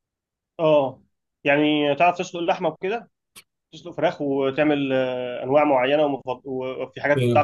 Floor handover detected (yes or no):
yes